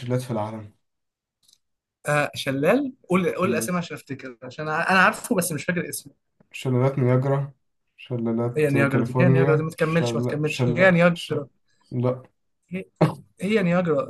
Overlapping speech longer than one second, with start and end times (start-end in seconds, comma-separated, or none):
8.6-11.4